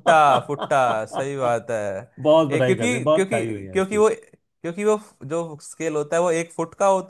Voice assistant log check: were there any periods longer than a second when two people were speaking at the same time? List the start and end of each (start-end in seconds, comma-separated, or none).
2.5-4.0